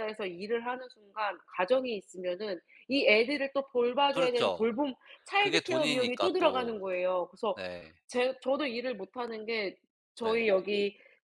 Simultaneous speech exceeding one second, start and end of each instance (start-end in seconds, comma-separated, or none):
5.4-6.8